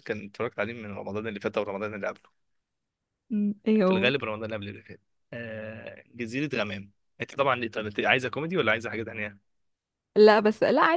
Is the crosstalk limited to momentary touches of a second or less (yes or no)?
yes